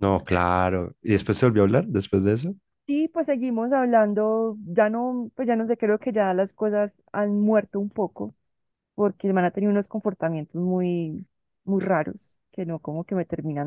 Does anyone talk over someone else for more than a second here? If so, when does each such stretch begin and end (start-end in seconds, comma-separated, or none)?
none